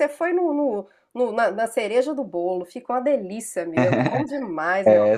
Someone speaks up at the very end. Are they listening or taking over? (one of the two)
taking over